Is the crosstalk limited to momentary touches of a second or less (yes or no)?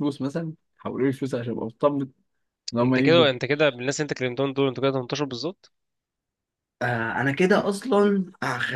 yes